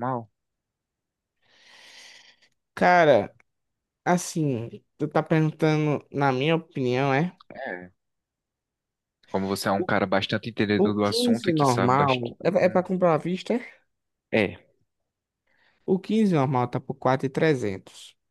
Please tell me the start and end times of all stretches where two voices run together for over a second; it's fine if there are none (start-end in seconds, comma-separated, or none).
10.8-12.3